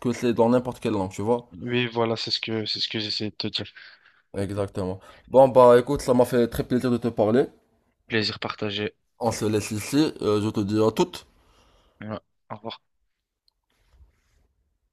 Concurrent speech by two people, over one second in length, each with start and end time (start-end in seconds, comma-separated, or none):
none